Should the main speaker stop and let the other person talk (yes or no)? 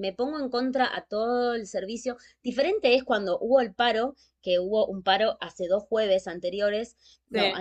no